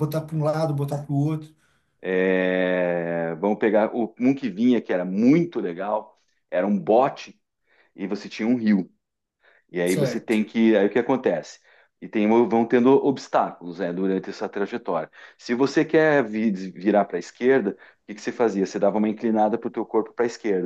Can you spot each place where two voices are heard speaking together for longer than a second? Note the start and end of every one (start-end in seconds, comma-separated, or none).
none